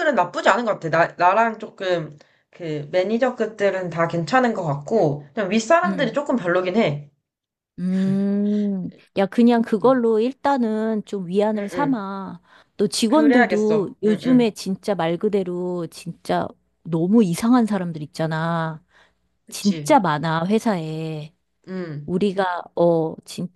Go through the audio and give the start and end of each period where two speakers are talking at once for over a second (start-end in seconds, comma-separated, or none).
13.1-14.5